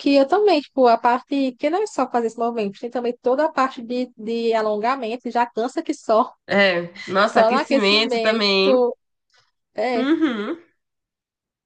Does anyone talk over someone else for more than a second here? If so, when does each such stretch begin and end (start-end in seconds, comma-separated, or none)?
7.2-8.4